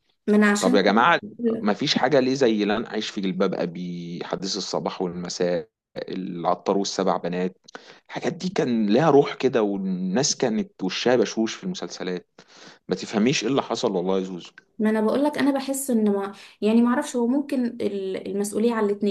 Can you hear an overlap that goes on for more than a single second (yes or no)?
no